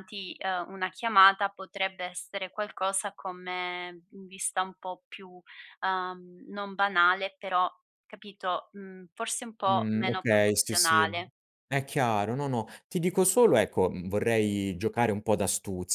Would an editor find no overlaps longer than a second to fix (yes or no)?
no